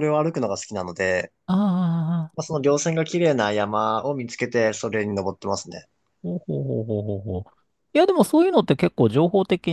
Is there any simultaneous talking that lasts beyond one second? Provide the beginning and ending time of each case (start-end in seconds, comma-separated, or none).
none